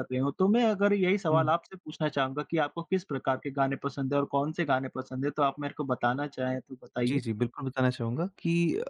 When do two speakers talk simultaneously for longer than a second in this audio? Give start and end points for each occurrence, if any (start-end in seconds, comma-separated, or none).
none